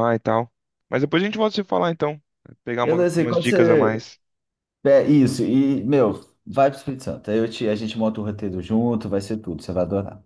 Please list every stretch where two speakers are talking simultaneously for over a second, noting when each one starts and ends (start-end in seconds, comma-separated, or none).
2.8-4.0